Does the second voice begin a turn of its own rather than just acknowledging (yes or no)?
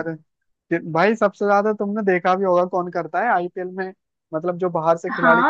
yes